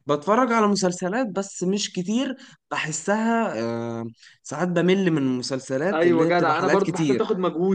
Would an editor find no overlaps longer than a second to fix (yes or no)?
no